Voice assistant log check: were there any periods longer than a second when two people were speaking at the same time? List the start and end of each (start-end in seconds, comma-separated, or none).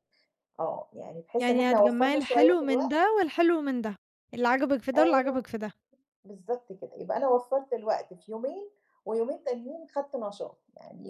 1.4-3.0